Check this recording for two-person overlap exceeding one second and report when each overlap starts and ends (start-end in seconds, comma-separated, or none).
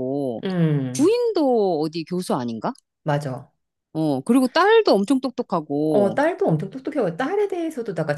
none